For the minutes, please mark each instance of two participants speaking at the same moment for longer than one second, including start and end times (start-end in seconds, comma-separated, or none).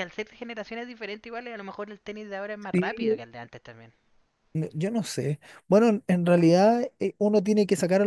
none